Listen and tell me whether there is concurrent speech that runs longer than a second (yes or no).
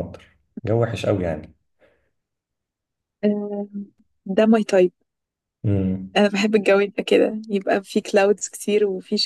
no